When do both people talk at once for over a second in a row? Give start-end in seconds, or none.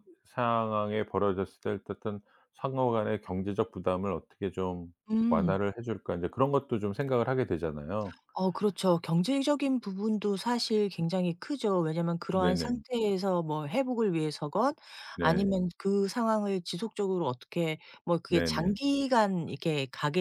none